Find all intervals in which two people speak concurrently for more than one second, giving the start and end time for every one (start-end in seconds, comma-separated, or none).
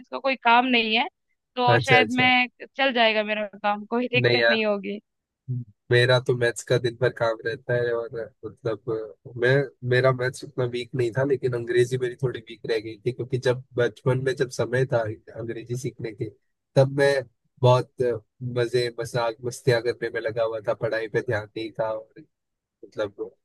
none